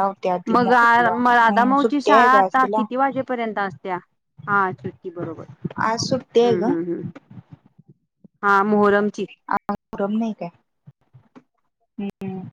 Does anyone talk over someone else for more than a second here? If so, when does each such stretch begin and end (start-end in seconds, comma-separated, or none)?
0.6-2.8